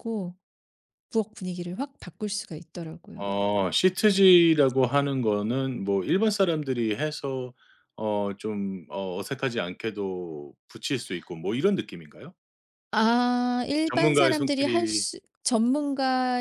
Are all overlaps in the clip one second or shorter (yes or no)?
no